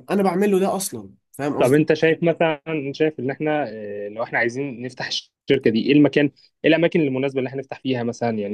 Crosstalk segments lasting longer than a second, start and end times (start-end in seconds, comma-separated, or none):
none